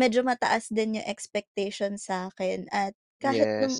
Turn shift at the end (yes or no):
no